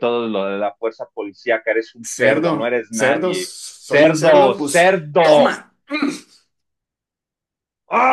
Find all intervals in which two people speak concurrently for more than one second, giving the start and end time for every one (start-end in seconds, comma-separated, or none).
2.0-5.5